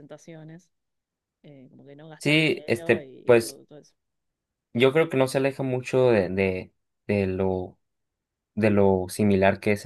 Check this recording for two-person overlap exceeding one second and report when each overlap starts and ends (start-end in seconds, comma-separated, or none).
2.2-3.6